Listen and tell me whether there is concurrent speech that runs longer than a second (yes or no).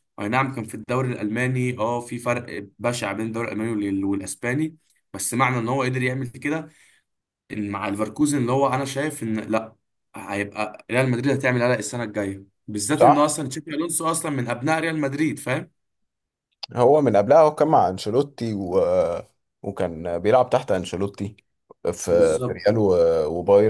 no